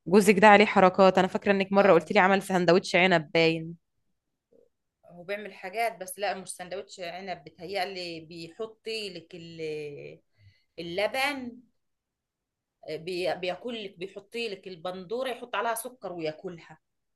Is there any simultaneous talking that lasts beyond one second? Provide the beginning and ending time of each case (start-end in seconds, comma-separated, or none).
none